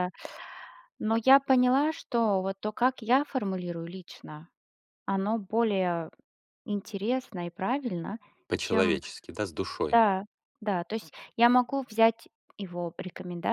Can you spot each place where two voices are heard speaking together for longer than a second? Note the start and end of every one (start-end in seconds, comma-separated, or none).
none